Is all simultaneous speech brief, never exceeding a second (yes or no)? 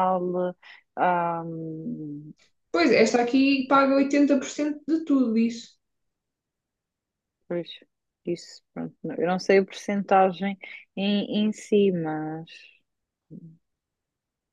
yes